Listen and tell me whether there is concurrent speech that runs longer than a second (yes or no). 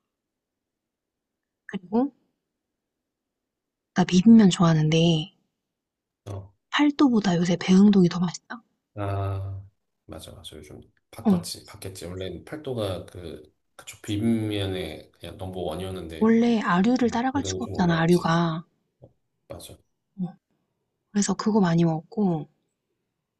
yes